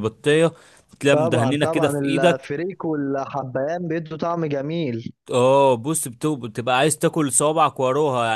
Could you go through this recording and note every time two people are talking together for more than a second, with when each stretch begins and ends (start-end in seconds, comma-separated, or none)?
1.1-2.5